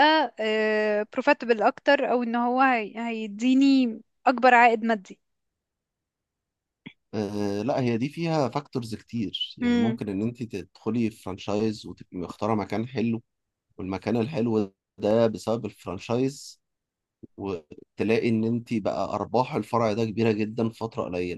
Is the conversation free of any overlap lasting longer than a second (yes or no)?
yes